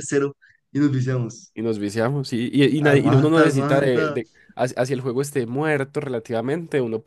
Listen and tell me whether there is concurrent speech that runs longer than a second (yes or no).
yes